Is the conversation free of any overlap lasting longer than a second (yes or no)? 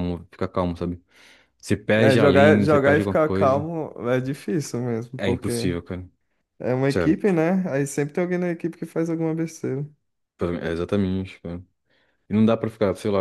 no